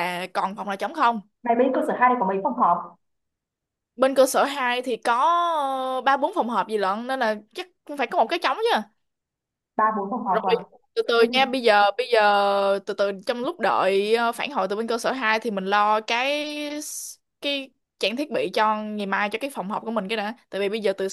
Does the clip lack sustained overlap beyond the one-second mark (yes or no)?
yes